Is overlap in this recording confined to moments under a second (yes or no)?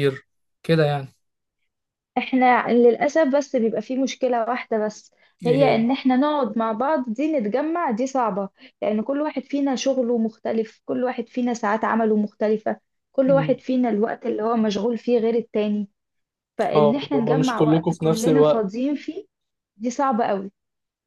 no